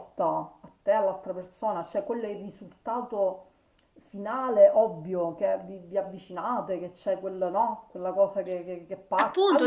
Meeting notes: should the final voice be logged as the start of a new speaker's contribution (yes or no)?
yes